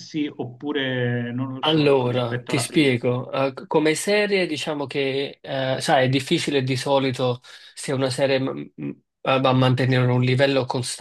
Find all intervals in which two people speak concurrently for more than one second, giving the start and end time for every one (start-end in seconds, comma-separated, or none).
1.6-3.0